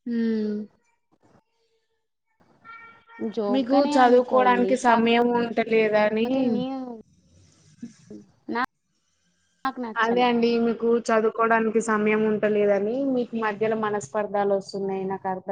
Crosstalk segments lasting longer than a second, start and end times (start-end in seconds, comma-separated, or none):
3.5-5.3